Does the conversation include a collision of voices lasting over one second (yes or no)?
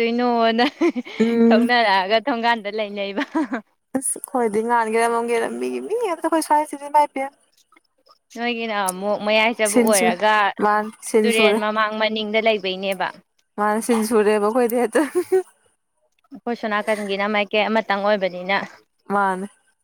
no